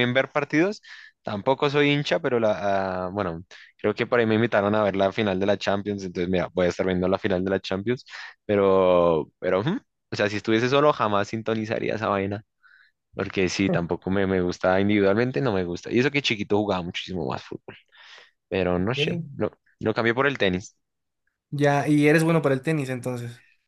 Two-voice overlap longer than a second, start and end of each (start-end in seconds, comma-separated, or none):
none